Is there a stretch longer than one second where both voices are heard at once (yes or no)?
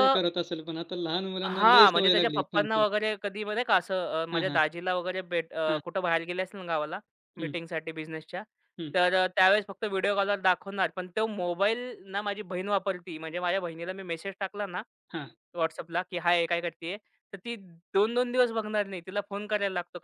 yes